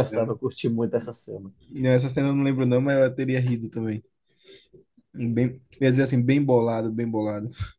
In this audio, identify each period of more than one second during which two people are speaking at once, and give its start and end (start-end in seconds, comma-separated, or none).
none